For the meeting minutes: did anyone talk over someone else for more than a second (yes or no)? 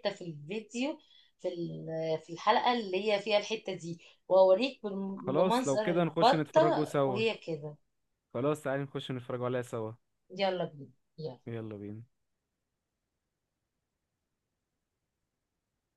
yes